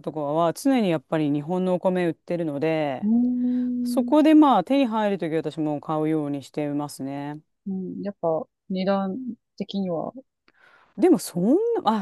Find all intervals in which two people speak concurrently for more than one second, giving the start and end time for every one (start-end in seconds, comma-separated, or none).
none